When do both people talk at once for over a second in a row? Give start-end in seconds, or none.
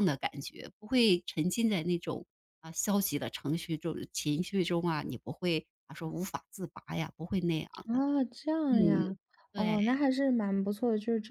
none